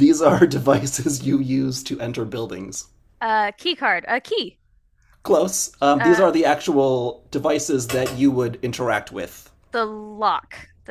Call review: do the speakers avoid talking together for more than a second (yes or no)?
yes